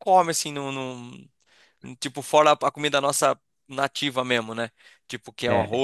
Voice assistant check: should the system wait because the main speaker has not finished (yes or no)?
yes